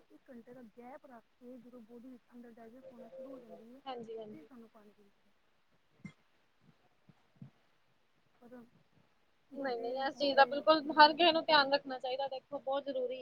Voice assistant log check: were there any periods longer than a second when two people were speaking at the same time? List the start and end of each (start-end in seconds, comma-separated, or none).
none